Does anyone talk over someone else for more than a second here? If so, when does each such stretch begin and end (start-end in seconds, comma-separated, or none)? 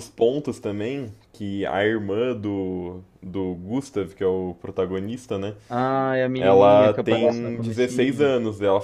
6.4-8.3